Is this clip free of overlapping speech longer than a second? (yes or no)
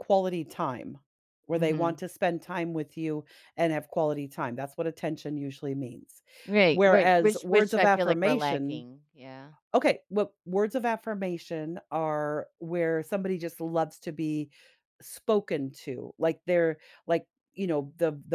no